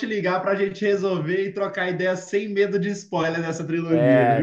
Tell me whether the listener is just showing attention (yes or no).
no